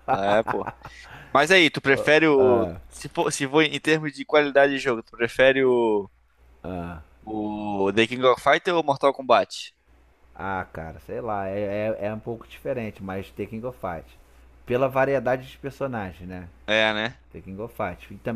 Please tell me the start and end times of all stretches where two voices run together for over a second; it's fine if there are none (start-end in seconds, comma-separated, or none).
none